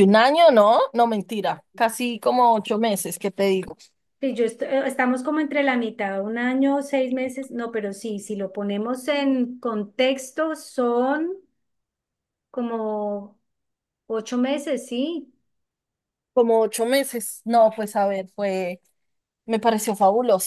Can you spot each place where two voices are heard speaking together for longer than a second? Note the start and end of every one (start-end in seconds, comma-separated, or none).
none